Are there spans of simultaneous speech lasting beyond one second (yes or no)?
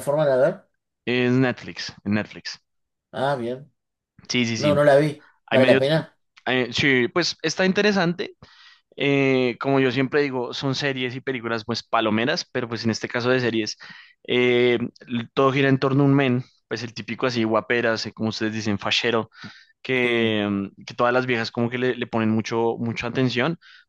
no